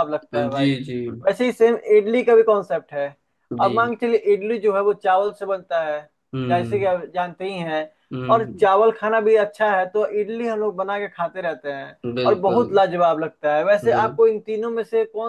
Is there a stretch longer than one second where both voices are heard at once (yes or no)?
no